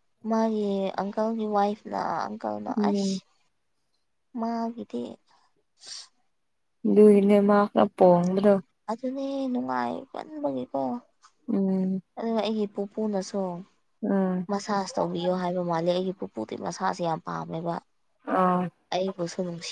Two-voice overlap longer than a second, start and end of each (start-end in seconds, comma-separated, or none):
none